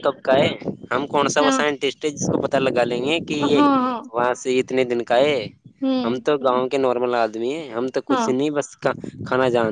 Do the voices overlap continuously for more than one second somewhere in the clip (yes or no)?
no